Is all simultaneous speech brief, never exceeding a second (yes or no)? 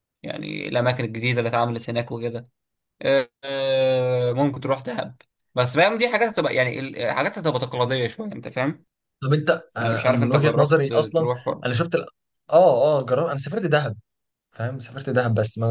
no